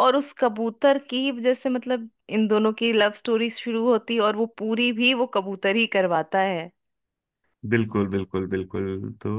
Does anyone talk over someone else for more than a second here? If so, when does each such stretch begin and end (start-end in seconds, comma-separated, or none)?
none